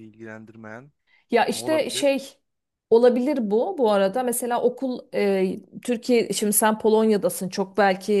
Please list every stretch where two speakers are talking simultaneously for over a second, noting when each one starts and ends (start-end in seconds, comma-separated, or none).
none